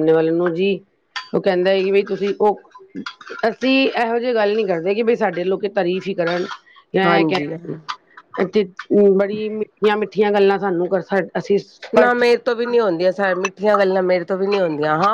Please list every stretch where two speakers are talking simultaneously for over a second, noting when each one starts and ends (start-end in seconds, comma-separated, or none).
none